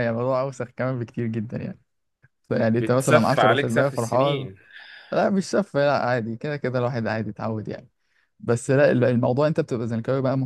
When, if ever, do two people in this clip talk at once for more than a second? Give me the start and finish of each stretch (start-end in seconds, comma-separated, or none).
2.8-4.5